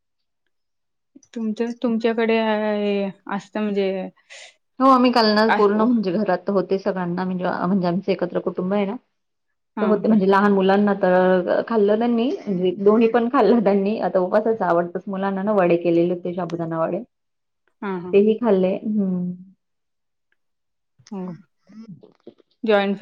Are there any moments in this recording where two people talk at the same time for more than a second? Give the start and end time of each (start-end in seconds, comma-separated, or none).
none